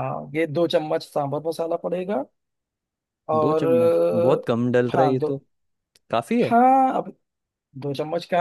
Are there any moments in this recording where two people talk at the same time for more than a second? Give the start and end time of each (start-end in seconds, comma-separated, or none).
3.4-5.3